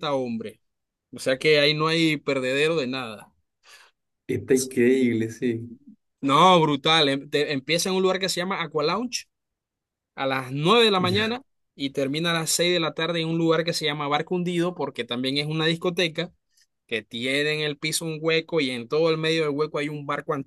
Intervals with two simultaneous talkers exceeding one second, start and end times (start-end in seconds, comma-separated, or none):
none